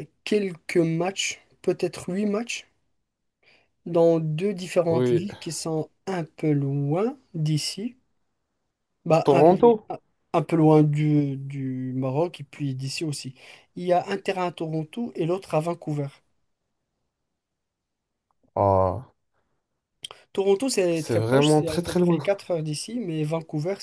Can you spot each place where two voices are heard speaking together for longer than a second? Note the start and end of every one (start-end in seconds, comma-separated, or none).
20.9-22.2